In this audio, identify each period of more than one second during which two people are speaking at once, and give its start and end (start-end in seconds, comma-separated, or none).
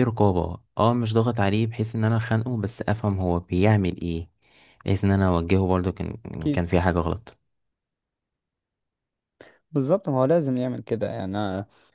none